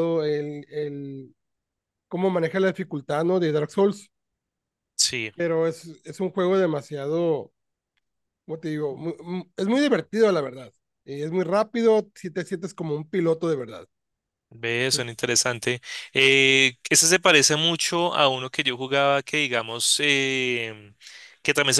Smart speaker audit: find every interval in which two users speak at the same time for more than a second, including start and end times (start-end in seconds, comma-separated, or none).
none